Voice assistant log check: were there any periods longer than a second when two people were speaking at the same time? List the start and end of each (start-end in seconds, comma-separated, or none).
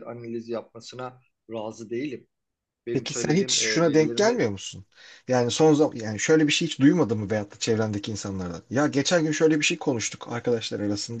2.9-4.5